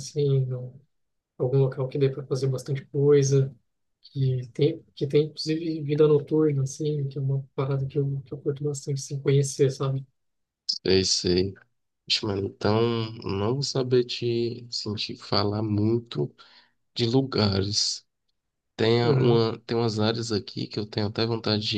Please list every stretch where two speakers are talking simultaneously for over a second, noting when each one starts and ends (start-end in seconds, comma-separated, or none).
none